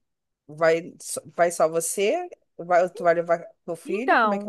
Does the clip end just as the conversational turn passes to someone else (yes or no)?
yes